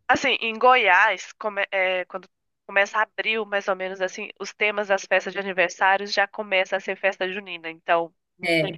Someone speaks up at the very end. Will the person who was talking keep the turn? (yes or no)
yes